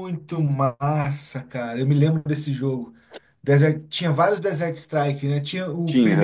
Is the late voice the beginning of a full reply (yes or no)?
no